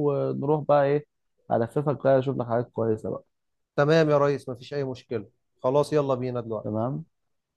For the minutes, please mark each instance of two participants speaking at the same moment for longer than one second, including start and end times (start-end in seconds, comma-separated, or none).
none